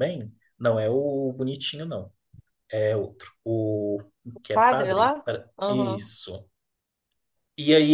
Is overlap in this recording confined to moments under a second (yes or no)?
no